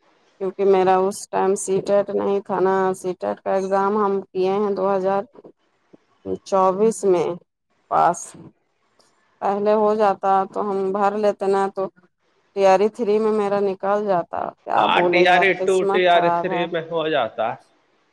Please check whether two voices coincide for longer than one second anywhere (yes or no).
yes